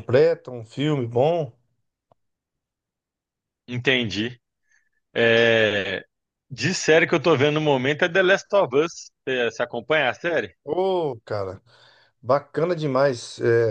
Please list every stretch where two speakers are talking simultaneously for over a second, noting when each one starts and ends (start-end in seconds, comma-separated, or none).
none